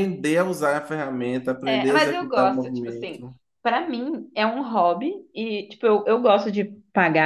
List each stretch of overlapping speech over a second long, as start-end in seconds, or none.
1.6-3.2